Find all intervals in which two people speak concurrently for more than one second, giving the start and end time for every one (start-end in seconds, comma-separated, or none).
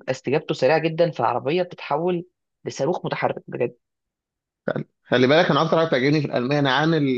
none